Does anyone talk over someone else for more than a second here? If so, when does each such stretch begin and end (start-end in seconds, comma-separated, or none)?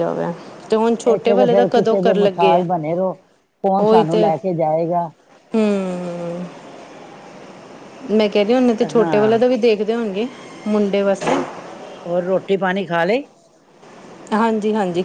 1.1-2.6